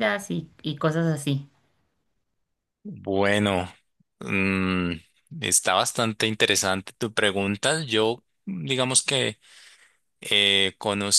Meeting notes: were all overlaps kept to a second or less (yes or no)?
yes